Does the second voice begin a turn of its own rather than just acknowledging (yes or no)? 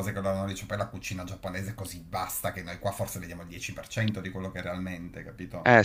yes